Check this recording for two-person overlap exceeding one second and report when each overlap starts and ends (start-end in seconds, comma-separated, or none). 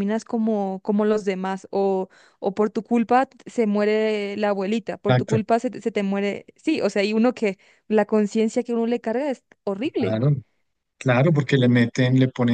none